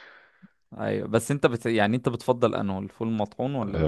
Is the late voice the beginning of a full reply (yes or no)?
yes